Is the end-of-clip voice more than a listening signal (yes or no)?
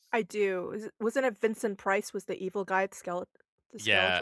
yes